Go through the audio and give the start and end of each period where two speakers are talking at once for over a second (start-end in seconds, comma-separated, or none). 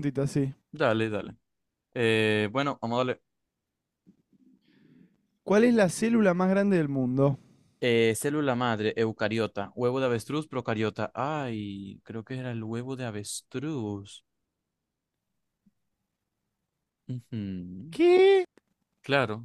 none